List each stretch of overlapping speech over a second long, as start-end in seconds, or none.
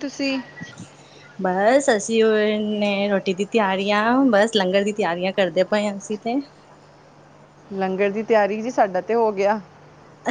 none